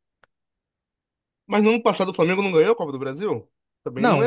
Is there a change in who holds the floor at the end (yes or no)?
yes